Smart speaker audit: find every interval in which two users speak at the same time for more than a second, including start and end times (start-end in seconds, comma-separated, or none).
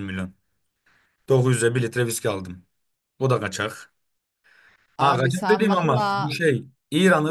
5.0-6.3